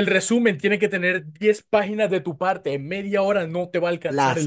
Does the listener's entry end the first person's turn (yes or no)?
yes